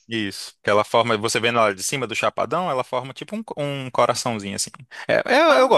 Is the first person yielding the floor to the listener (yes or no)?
no